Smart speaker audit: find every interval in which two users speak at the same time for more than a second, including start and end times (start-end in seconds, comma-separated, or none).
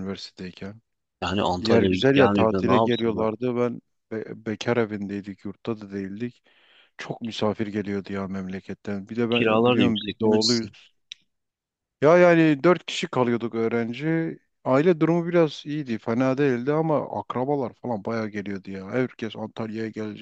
1.6-3.3, 9.3-10.8